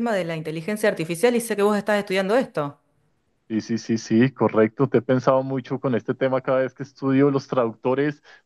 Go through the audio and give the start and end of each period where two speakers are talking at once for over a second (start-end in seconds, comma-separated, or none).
none